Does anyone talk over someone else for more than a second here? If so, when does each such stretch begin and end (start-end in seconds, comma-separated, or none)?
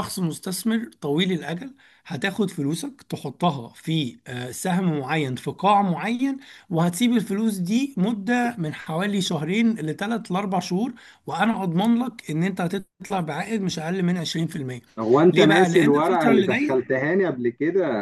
15.3-16.9